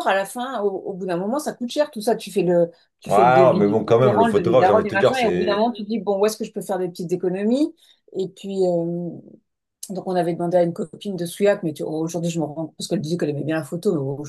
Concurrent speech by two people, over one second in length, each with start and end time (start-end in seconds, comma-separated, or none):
3.1-5.7